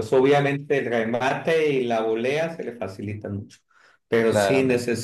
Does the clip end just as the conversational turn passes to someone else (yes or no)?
no